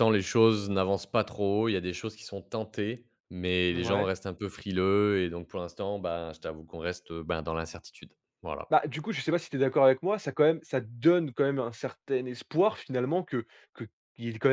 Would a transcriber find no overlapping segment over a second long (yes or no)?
yes